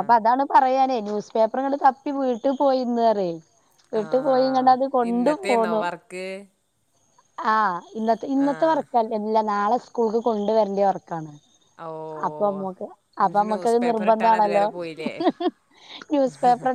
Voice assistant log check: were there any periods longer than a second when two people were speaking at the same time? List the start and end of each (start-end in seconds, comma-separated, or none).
13.2-14.7